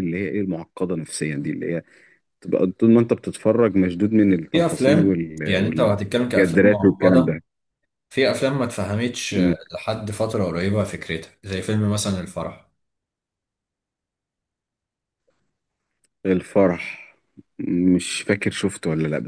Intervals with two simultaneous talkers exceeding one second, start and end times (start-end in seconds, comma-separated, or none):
4.5-7.3